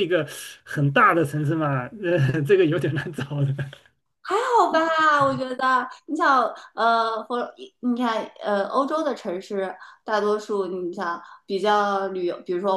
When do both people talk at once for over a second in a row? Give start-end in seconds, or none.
none